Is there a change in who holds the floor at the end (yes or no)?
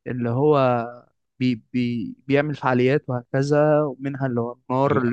no